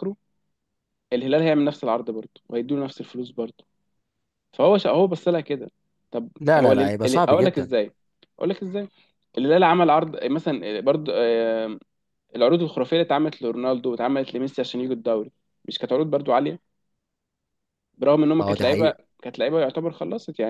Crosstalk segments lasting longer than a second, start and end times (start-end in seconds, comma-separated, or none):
6.4-7.7